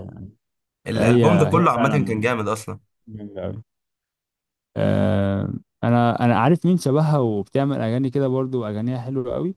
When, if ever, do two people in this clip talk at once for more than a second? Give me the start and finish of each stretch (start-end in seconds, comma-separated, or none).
1.0-2.3